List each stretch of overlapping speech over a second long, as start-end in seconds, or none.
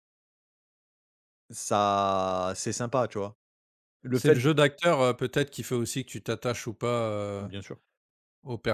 none